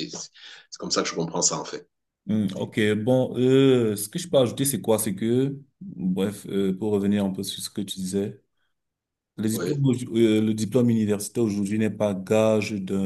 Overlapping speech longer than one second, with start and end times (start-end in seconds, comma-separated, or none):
none